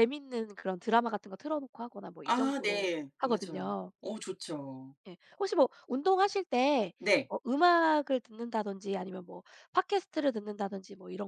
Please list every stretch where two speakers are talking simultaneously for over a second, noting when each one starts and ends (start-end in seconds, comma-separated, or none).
2.2-3.9